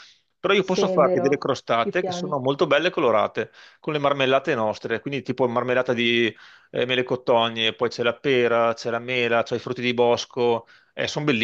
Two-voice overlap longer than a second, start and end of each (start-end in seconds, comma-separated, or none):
0.6-2.4